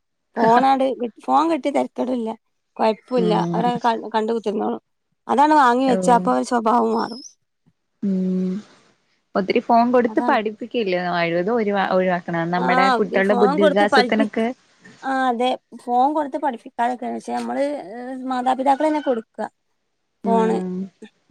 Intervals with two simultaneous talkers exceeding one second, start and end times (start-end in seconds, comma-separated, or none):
12.6-14.3